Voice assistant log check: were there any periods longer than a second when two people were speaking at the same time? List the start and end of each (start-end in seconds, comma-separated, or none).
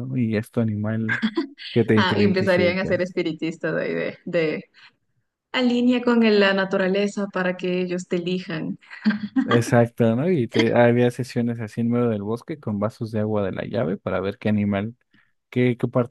1.9-3.1